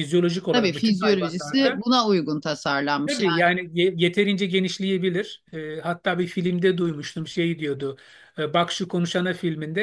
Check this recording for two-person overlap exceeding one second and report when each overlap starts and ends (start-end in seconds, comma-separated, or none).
0.5-1.9